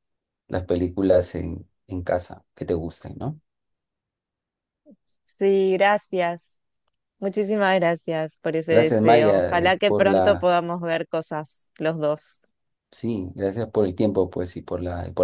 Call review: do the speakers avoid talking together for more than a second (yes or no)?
no